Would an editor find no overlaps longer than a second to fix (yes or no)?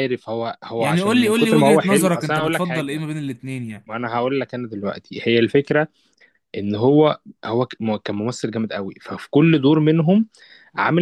no